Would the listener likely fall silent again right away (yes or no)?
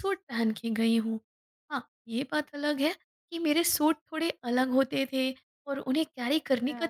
yes